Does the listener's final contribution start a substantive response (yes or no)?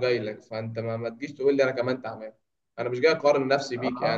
no